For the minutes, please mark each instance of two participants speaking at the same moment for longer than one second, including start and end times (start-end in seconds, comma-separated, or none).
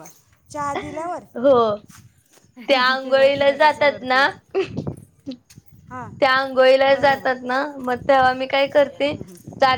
3.0-4.3